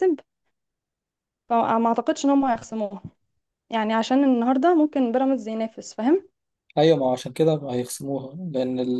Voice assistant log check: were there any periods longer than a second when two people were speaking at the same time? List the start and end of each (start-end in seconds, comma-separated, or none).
none